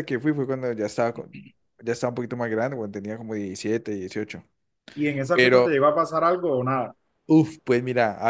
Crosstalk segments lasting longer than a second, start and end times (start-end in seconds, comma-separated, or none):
none